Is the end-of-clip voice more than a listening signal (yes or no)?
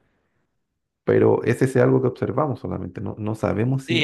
yes